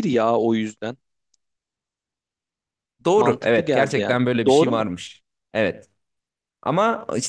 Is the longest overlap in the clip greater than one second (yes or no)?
yes